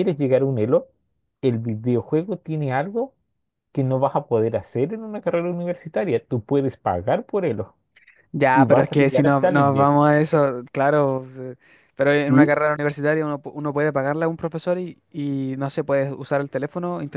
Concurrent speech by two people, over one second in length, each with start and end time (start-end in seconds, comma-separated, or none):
8.5-9.9